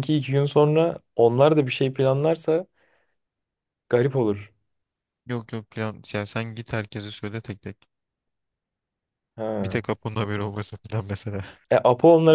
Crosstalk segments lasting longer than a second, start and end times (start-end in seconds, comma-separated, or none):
none